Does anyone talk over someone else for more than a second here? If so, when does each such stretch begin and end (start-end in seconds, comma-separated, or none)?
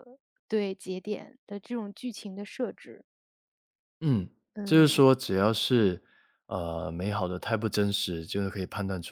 none